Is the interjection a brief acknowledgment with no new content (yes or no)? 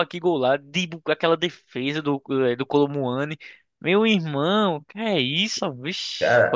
no